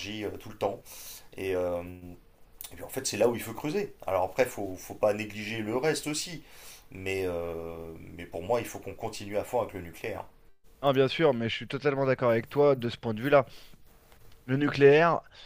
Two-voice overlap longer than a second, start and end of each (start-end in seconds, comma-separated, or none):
none